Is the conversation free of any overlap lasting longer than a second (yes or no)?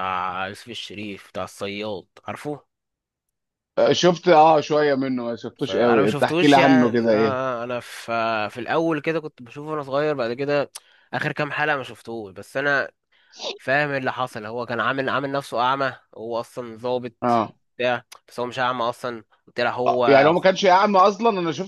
no